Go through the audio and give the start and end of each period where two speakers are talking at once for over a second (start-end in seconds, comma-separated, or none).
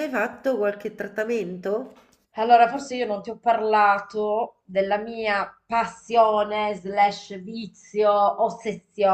none